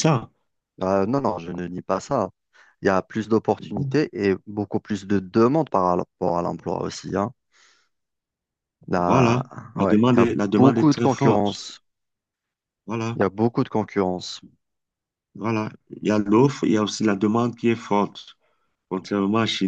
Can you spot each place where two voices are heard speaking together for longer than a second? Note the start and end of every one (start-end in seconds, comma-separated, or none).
9.1-11.6